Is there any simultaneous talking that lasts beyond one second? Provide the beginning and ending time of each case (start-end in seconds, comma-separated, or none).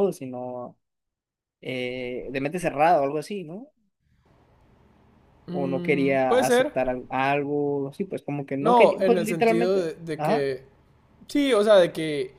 5.5-6.7, 8.6-10.5